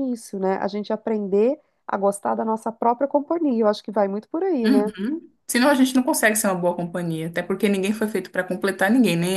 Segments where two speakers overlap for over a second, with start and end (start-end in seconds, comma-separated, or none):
none